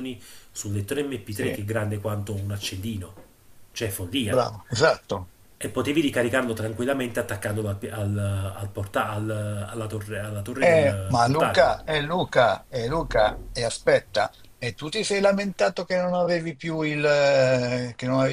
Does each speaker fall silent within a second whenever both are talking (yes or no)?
no